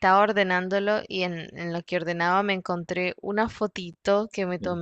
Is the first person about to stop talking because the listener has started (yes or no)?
no